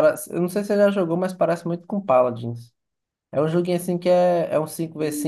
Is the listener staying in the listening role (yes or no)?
no